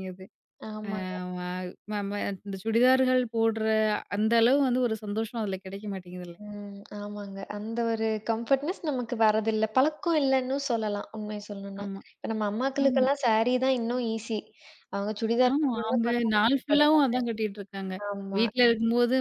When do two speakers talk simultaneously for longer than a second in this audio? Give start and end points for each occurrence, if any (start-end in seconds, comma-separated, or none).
15.5-17.2